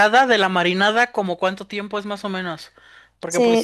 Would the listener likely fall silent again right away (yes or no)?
no